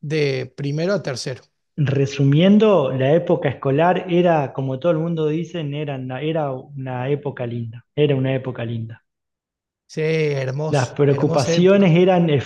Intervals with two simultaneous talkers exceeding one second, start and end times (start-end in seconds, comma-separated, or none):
10.7-11.9